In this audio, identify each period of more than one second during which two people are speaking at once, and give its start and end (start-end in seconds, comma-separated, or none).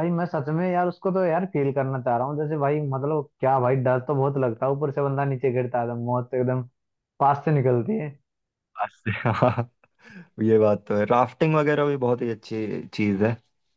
none